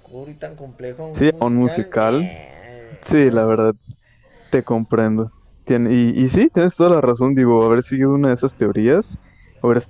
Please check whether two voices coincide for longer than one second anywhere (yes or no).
yes